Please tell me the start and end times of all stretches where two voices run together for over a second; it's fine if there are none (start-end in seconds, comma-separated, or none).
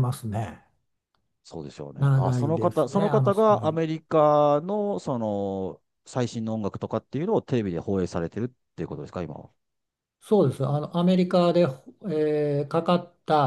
2.0-3.8